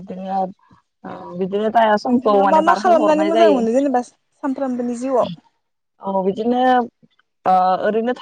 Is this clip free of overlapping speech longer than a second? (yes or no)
no